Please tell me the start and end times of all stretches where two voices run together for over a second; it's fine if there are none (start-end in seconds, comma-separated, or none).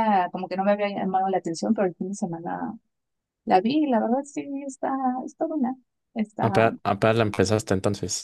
none